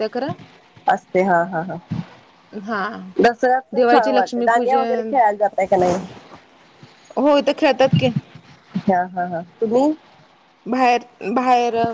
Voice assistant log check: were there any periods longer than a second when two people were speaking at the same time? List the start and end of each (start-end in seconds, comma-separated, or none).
3.8-5.1